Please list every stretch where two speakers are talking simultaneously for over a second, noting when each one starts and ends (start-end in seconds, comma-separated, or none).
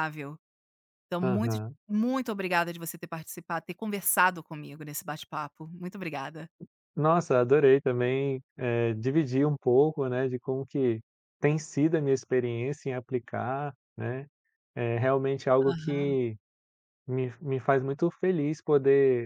none